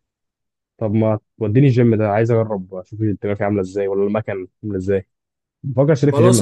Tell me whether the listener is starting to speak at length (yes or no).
yes